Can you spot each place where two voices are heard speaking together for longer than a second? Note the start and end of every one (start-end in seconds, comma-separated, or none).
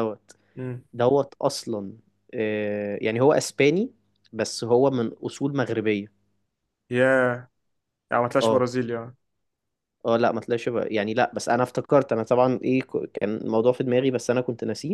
none